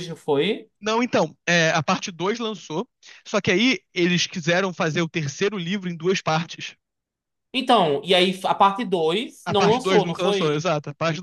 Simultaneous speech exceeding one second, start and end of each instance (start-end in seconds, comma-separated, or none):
9.4-10.7